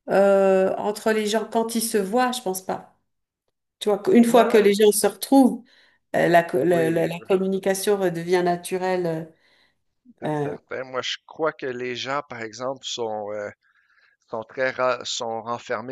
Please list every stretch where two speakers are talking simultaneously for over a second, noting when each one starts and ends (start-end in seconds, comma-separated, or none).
none